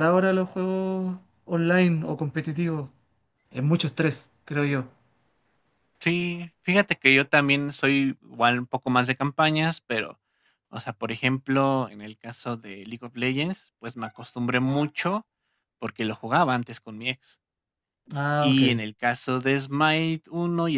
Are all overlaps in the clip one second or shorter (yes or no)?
yes